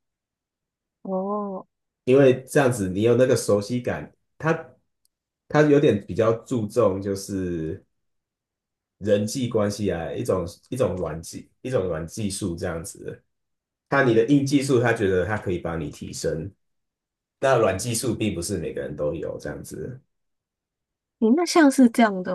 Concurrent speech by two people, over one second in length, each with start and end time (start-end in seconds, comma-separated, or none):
none